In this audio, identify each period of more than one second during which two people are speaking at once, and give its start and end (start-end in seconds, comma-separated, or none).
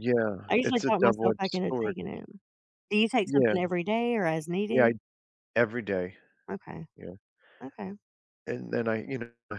0.5-1.9